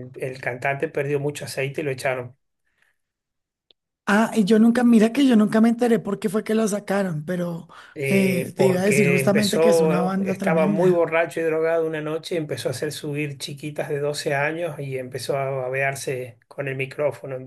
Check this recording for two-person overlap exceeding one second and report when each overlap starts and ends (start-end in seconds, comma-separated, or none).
8.1-11.0